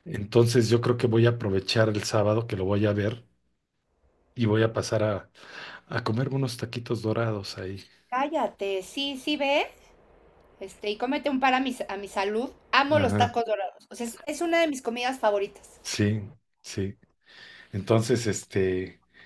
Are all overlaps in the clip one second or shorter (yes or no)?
yes